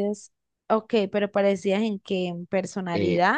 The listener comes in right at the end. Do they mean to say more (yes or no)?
yes